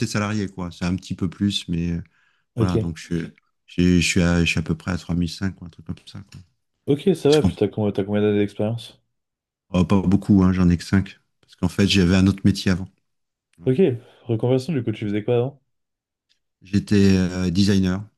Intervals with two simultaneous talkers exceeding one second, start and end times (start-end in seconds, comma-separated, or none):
none